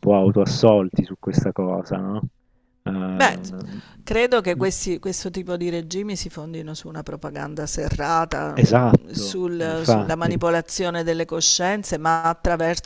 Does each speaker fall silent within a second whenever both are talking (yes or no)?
no